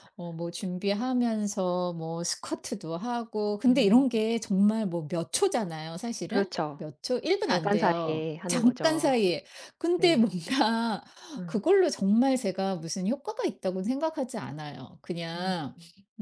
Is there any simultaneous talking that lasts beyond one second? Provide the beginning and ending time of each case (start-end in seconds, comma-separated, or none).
7.4-9.1